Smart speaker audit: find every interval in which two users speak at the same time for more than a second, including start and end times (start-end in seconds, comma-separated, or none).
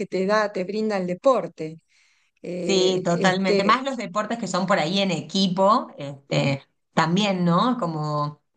2.6-3.8